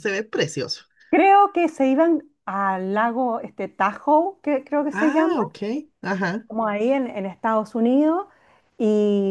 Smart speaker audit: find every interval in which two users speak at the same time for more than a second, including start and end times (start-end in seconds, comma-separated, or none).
none